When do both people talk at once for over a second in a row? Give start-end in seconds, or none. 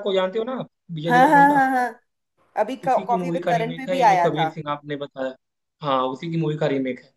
2.8-4.5